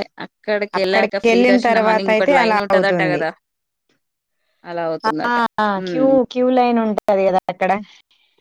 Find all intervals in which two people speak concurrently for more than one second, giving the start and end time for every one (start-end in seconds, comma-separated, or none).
1.3-3.2